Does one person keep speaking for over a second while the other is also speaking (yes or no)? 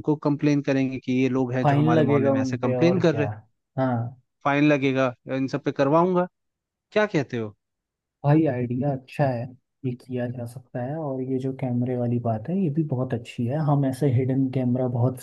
yes